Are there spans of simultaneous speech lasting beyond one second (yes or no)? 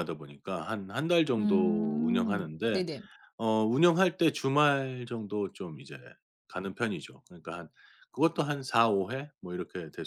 yes